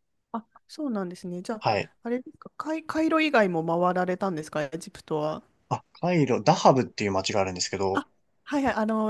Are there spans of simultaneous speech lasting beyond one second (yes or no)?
no